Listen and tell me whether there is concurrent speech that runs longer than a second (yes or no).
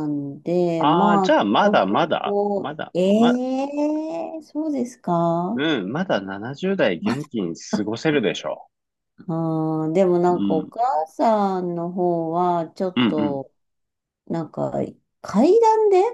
yes